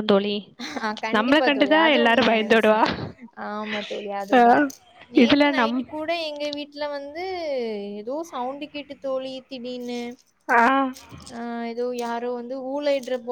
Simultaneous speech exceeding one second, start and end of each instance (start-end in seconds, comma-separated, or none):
1.2-2.8